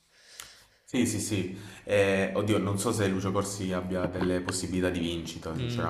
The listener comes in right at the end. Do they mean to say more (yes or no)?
yes